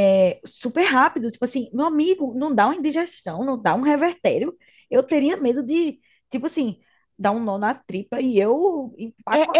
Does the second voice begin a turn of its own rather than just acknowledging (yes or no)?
yes